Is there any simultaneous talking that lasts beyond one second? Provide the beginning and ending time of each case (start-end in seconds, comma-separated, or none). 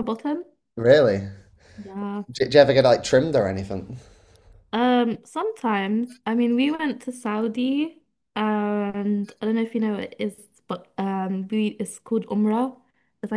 none